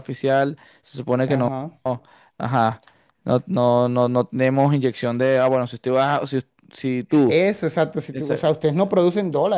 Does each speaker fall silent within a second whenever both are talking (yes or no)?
yes